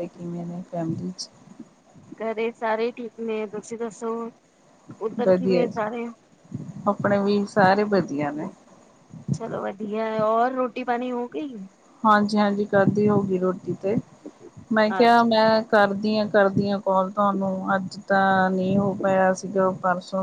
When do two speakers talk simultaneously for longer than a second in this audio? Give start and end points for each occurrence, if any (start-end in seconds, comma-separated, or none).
none